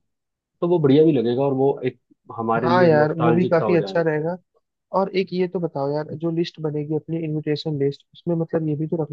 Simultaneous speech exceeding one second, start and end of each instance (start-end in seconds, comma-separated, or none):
2.6-4.0